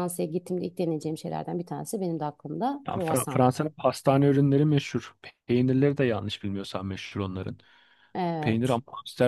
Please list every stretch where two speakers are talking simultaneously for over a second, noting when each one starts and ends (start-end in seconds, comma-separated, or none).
none